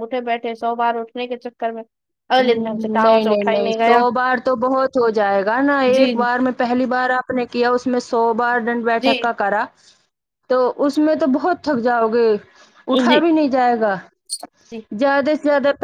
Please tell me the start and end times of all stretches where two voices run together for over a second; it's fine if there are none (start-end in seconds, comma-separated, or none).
2.4-4.0